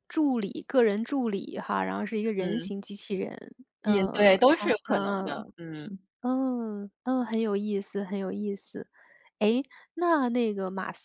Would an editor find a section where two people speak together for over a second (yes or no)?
yes